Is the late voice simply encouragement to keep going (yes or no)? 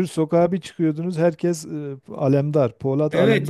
no